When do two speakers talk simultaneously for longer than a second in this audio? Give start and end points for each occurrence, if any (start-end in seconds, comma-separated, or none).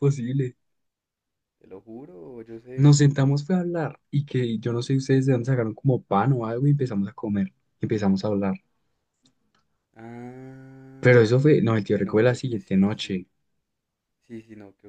11.9-13.2